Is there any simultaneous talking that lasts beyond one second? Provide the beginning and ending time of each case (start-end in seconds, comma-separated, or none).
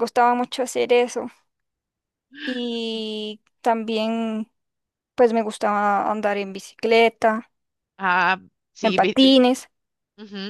none